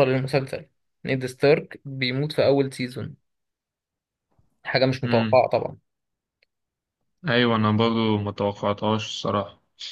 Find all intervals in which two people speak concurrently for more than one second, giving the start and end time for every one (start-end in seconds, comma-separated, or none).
none